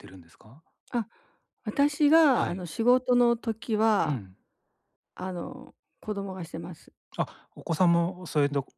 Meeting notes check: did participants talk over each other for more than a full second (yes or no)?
no